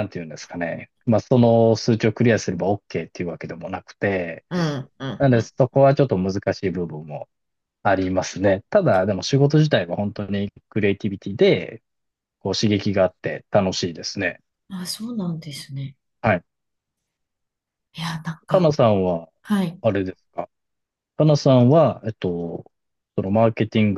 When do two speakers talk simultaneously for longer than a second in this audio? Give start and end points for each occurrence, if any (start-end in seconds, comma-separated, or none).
none